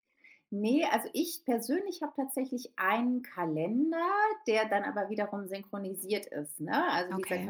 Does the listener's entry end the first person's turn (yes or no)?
no